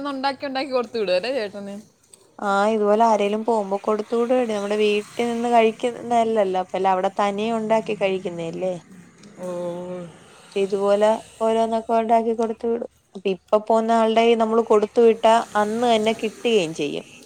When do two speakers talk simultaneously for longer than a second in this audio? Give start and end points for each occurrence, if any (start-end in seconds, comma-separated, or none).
none